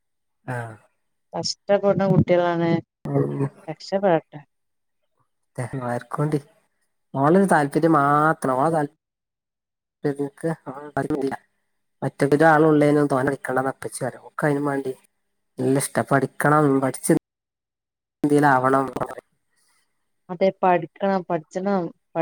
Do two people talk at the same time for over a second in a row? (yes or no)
no